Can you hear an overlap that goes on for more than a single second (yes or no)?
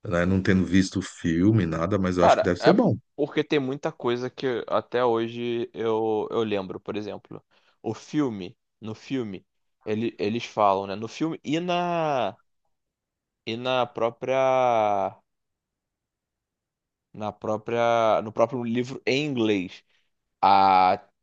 no